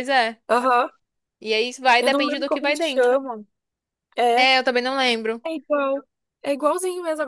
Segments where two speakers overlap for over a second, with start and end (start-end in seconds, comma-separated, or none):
2.0-3.2